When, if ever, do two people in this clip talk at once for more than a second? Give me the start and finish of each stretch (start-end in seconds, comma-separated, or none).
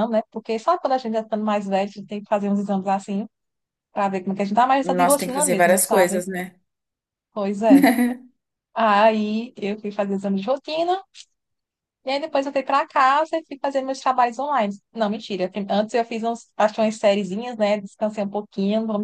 4.8-6.2